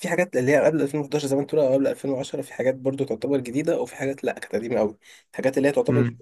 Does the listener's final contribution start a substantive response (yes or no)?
no